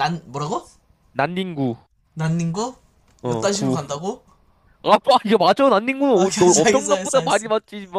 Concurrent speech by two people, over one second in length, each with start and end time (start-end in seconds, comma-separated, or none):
6.1-7.5